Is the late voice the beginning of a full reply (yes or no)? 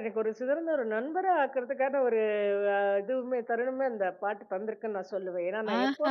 yes